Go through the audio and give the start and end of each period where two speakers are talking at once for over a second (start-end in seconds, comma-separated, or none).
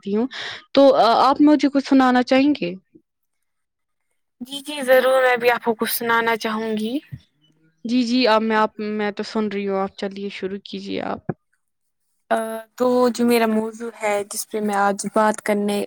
none